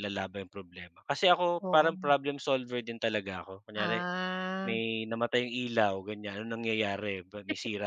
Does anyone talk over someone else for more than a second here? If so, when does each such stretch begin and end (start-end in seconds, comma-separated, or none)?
none